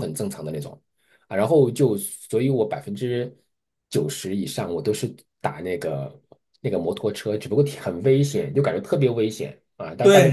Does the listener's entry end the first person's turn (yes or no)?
yes